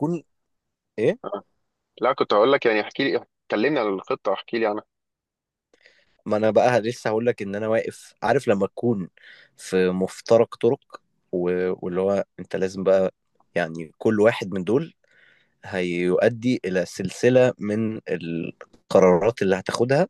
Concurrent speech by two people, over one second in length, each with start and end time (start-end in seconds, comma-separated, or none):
none